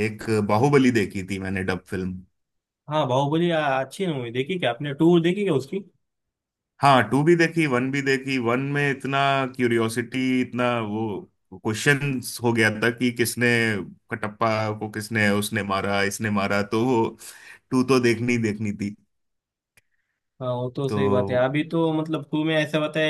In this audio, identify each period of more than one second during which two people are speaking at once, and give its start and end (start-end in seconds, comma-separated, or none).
none